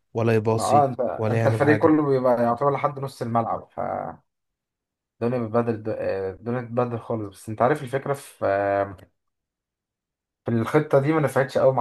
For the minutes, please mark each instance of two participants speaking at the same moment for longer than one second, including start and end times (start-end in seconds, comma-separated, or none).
0.5-2.0